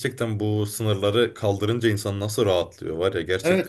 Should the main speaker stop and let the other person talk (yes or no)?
yes